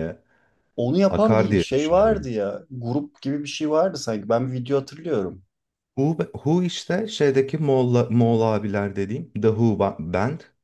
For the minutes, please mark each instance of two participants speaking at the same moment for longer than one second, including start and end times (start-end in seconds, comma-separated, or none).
1.1-2.3